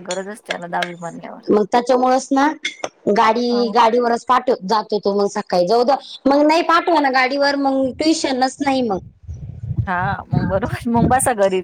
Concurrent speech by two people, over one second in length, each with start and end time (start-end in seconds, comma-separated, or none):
none